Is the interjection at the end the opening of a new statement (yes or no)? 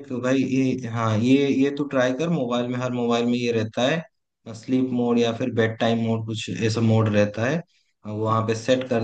no